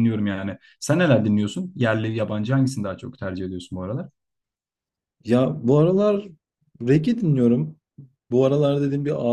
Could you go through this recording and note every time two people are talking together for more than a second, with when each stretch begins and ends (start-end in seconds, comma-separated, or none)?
none